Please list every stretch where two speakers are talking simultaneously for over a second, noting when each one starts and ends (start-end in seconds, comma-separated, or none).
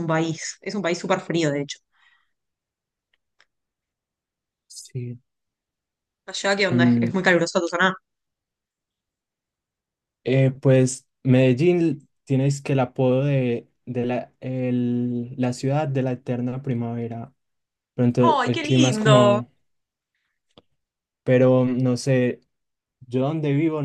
18.2-19.4